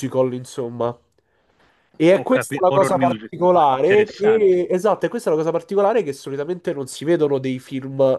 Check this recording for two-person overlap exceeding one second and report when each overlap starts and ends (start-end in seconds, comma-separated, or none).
2.2-4.6